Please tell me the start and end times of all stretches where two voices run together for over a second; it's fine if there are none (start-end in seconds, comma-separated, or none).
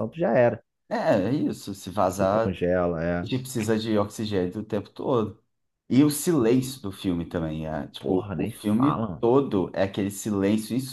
8.0-9.3